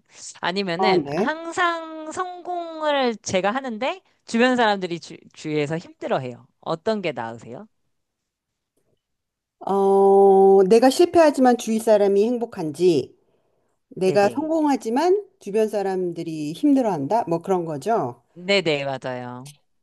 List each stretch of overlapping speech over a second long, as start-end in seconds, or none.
none